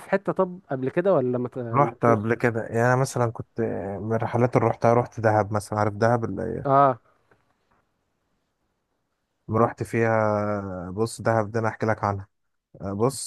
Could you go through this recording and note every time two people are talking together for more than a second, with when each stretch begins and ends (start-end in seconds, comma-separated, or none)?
none